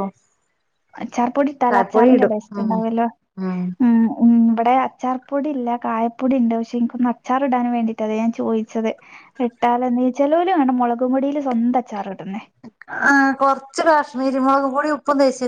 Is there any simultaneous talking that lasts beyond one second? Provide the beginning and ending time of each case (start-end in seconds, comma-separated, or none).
none